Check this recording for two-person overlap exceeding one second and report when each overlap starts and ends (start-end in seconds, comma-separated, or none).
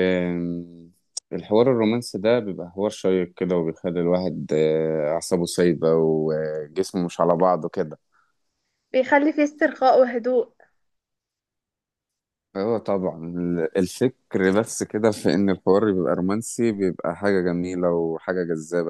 none